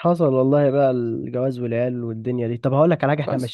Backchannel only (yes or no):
yes